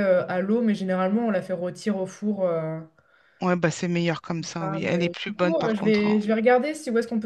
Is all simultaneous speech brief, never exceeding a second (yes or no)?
no